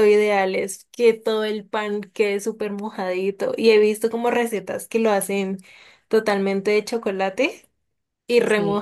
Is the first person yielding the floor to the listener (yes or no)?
no